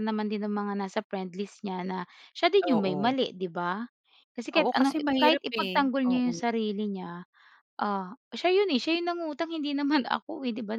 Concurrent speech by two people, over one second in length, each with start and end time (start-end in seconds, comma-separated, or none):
4.6-6.4